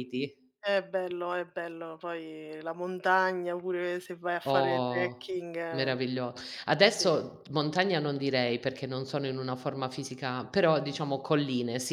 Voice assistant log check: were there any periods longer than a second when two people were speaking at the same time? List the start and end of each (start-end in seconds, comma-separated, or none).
4.5-6.0